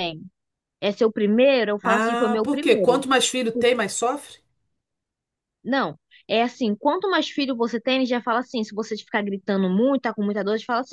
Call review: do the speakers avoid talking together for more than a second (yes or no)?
no